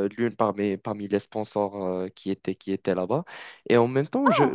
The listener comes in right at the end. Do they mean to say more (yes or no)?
no